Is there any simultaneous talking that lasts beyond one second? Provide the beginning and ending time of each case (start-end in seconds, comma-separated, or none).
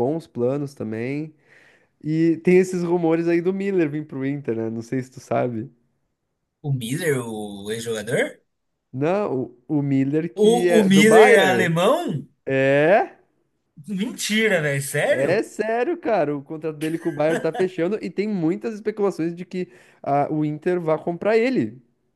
10.3-11.8